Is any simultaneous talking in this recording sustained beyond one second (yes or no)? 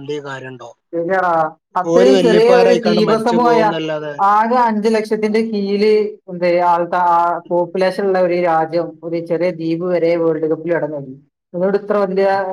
yes